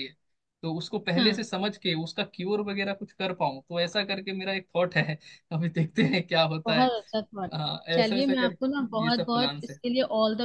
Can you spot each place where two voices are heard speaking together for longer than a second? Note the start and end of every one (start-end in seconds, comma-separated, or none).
7.9-9.8